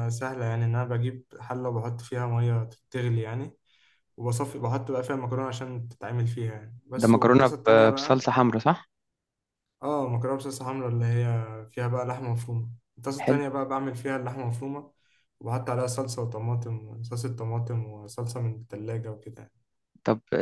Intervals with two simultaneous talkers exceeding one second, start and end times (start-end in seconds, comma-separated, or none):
7.0-8.3